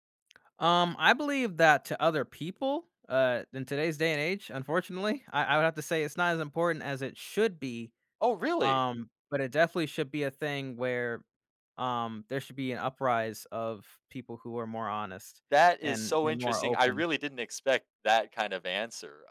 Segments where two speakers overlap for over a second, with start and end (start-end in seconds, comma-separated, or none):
15.8-17.1